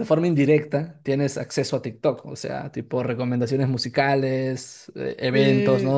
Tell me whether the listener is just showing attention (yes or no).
yes